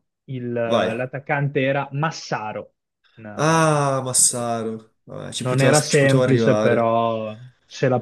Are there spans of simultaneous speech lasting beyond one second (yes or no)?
yes